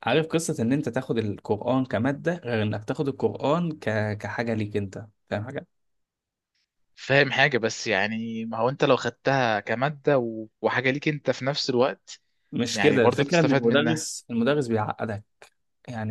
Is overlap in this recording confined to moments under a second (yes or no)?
no